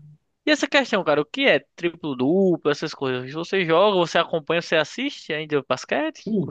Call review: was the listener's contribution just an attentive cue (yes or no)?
no